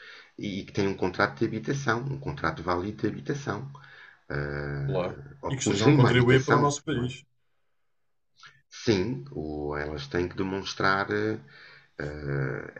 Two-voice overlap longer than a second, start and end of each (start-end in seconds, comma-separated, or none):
4.8-7.1